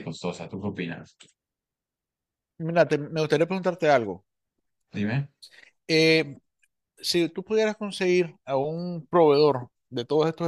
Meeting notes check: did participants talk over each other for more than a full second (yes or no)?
no